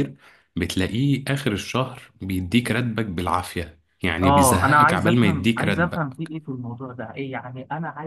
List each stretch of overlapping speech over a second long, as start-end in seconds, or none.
4.2-6.3